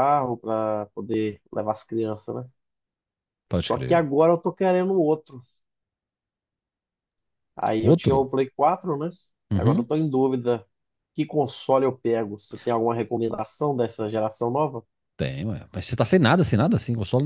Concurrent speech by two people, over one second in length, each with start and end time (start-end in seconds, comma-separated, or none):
none